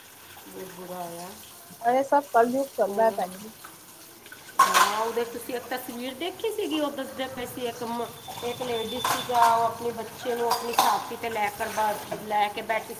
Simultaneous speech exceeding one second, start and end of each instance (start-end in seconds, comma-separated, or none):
none